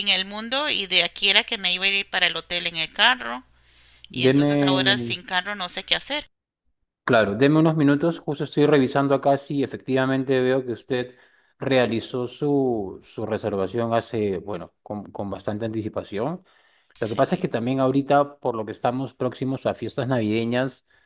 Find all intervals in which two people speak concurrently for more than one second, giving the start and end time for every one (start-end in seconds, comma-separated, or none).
none